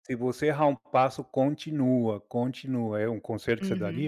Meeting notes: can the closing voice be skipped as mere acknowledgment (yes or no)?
no